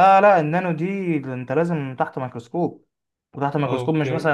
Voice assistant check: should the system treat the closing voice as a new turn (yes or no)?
no